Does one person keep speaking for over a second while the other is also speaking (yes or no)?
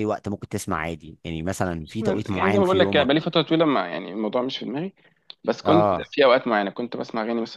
yes